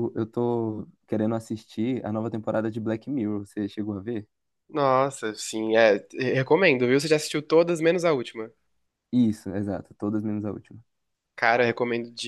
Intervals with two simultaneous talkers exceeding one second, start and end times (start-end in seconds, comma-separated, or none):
none